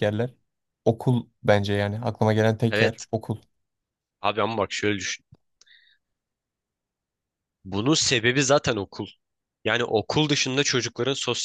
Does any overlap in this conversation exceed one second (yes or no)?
no